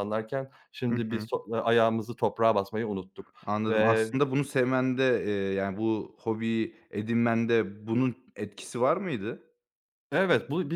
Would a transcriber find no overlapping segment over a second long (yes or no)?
yes